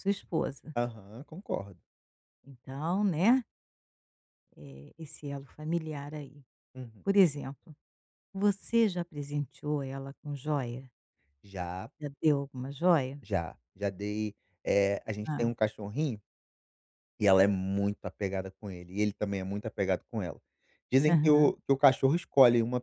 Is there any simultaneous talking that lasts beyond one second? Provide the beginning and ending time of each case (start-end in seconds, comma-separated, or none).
none